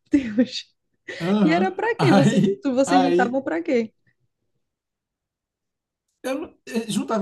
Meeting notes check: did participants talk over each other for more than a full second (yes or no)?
yes